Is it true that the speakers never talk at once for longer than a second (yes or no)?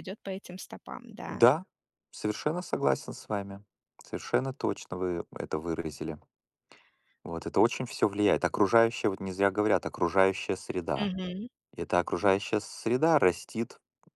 yes